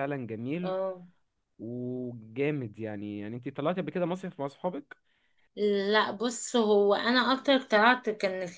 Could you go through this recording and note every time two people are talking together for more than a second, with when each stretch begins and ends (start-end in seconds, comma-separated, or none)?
none